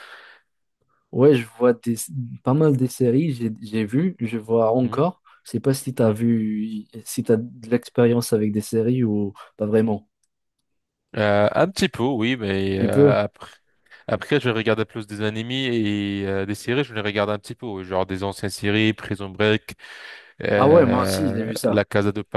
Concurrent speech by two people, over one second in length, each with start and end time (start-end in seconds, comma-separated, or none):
20.6-21.8